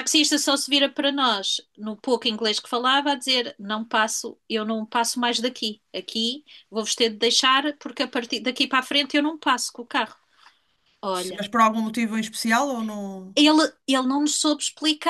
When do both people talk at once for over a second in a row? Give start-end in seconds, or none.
none